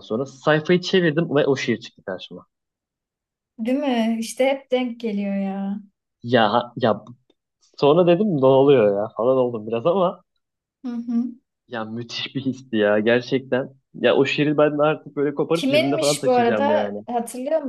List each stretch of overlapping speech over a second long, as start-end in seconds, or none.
15.5-17.0